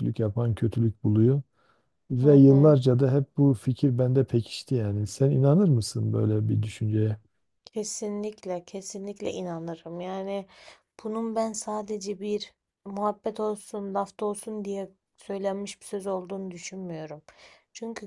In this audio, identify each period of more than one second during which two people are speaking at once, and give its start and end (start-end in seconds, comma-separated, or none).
none